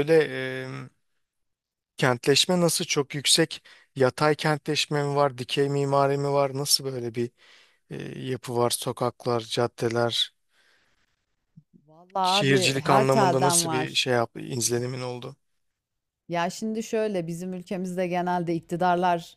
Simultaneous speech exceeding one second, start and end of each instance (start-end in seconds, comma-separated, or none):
12.2-14.2